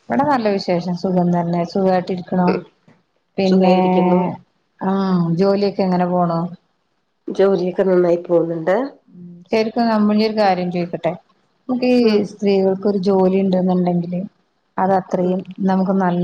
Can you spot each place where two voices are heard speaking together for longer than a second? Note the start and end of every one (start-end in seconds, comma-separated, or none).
none